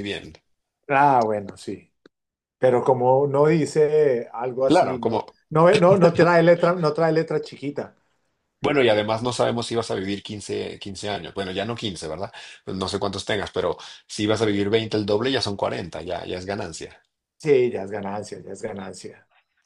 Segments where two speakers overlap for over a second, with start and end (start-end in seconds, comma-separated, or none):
none